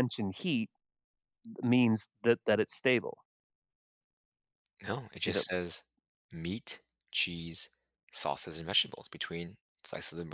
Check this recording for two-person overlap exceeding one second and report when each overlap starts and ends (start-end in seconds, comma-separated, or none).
none